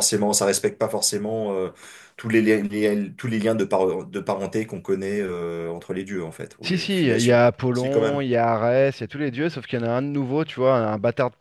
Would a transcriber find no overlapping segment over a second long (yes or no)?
no